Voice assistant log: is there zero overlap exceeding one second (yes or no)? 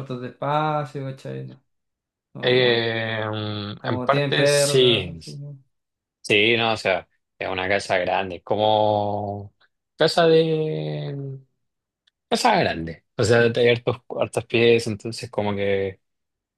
no